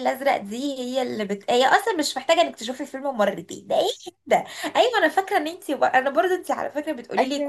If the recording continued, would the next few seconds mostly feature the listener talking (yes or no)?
no